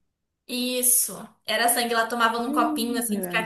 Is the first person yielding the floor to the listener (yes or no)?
no